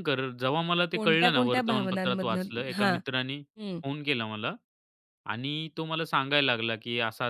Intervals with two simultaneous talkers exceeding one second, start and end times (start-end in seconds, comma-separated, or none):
0.9-3.0